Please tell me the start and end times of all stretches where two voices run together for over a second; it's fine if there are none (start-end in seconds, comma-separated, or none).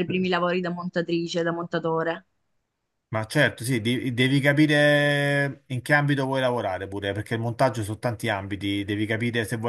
none